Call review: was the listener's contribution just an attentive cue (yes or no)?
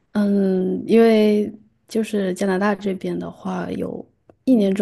yes